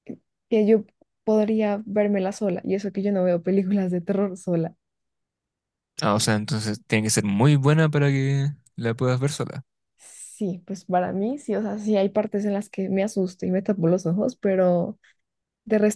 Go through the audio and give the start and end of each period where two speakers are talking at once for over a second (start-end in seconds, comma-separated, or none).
none